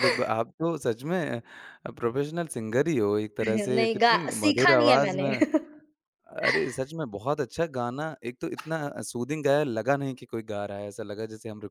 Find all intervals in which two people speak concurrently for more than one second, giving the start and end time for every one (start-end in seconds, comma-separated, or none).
3.4-5.3